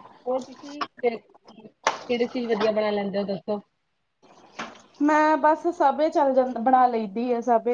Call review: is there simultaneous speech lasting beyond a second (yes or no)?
no